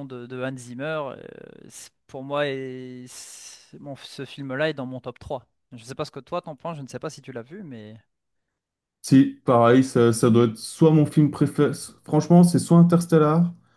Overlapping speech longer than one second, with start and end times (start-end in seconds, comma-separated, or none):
none